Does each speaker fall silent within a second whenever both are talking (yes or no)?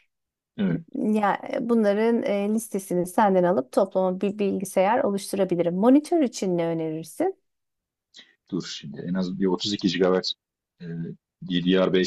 yes